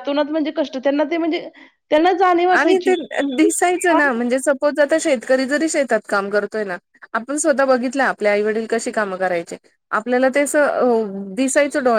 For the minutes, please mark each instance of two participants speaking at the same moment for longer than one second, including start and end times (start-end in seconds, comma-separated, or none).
none